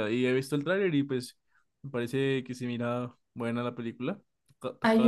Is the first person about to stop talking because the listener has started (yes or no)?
yes